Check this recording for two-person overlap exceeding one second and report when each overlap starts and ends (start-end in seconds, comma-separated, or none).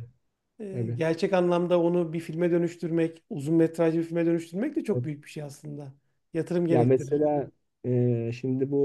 none